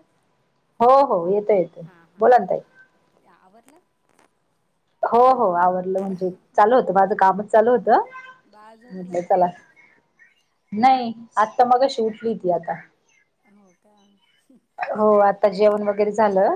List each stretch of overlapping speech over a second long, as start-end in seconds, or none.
none